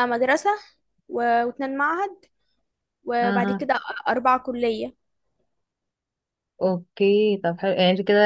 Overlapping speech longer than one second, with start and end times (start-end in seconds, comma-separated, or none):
none